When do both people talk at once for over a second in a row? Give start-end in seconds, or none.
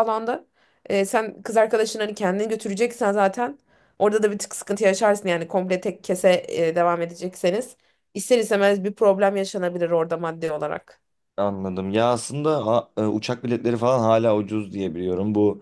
none